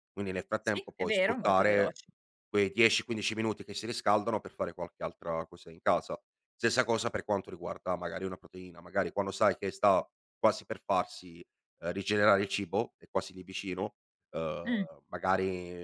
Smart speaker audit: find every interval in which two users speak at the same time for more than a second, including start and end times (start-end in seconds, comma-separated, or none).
0.6-2.0